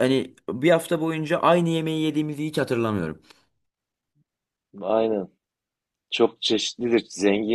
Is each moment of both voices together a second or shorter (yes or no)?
yes